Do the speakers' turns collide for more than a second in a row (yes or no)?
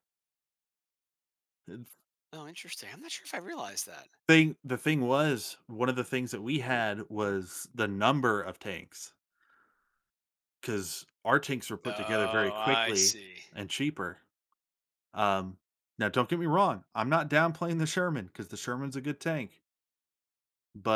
yes